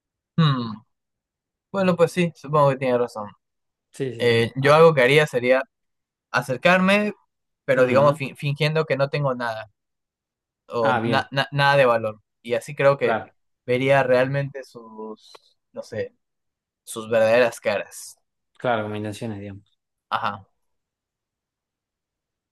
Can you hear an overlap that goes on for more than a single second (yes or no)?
no